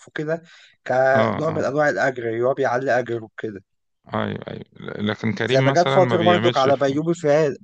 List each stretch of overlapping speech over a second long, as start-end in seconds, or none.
5.4-7.0